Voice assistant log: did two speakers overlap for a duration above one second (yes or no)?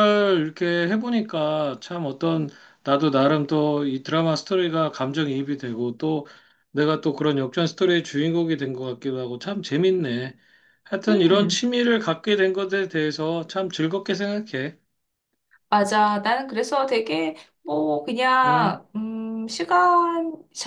no